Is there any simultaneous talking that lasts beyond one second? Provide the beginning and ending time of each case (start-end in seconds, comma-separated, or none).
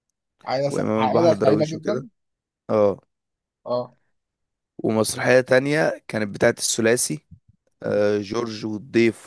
0.7-2.1